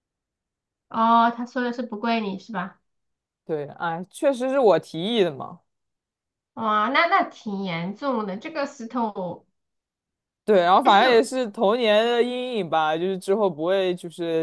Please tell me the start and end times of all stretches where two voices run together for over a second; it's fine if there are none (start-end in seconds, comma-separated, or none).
none